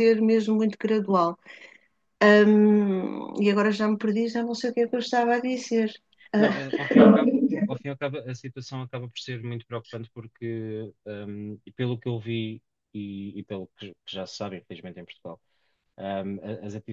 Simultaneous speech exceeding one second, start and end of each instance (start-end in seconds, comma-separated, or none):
6.4-7.8